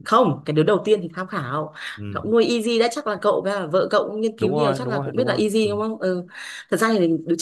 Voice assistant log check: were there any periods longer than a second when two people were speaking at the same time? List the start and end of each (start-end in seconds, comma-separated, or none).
4.4-5.7